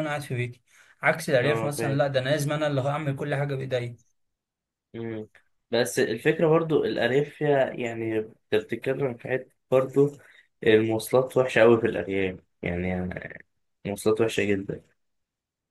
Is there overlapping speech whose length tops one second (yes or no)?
no